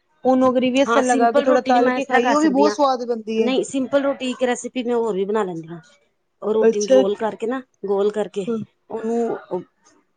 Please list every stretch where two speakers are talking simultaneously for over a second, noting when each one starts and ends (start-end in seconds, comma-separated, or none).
0.9-2.8